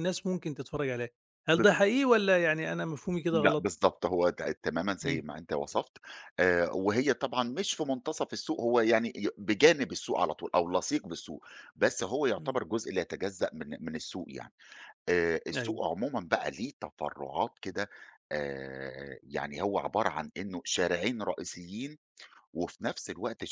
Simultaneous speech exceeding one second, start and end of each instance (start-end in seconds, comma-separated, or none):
none